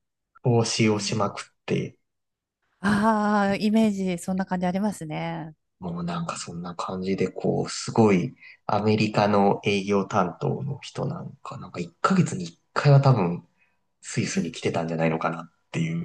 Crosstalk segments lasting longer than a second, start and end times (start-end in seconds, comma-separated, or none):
none